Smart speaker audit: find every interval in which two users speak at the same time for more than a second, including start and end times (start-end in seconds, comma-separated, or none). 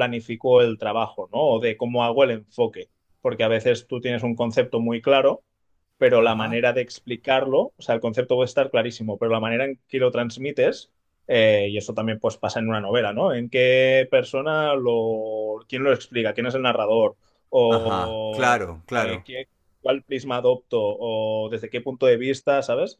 17.7-19.2